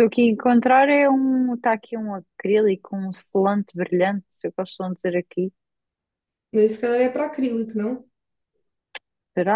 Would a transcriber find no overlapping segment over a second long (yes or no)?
yes